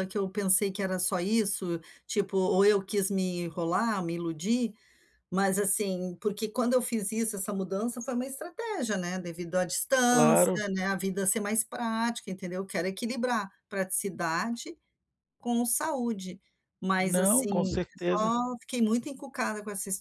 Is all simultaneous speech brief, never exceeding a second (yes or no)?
no